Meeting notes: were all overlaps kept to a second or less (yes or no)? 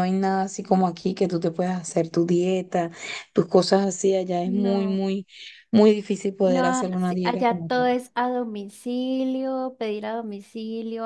no